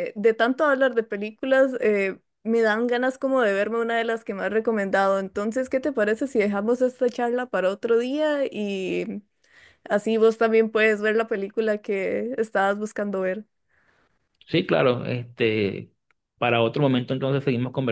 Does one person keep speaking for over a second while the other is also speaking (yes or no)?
no